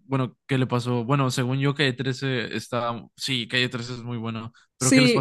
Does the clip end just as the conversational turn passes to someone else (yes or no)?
yes